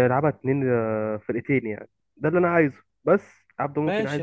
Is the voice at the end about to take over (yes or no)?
yes